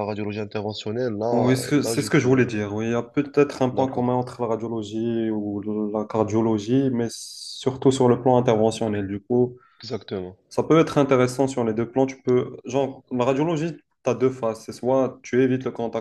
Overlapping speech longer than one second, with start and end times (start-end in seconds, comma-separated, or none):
1.3-2.6